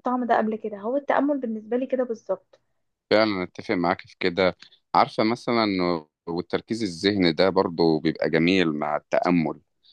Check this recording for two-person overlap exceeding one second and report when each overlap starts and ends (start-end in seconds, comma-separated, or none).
none